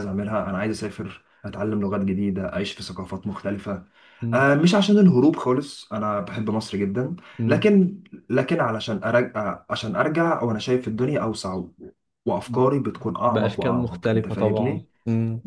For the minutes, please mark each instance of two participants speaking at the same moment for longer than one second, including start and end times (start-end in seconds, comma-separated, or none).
13.3-14.9